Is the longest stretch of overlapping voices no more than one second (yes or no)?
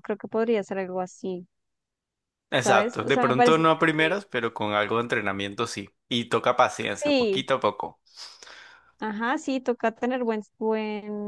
no